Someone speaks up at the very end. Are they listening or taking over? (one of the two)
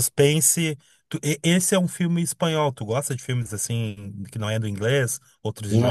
taking over